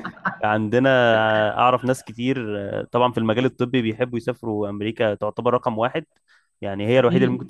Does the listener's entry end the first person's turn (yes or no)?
no